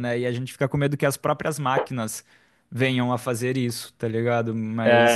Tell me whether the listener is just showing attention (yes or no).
no